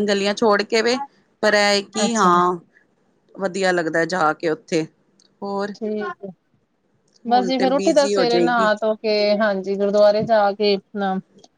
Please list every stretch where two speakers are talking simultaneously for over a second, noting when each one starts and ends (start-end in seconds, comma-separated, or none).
7.3-8.7